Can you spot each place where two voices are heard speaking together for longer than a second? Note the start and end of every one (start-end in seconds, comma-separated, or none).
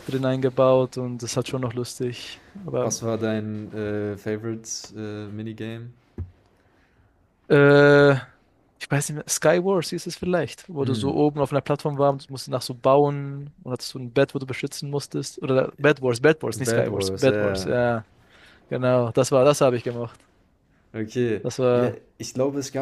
16.6-17.8